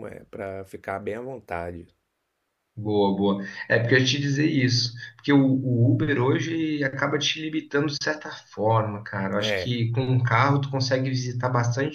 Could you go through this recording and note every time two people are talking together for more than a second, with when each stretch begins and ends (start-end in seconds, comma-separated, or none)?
none